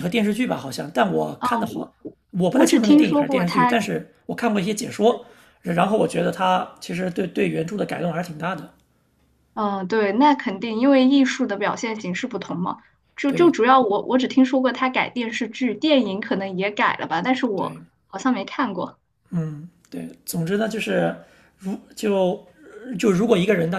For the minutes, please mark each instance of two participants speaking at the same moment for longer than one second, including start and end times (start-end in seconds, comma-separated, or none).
2.5-3.8